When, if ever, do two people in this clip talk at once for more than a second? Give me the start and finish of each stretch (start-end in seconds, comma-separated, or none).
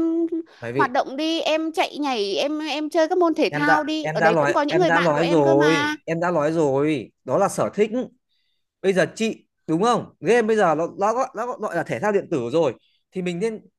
3.5-6.0